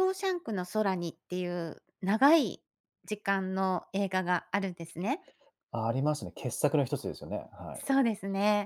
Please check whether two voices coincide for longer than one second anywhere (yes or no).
no